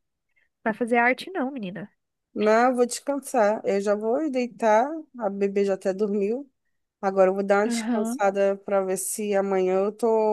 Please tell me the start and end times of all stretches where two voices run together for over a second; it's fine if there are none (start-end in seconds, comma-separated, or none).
none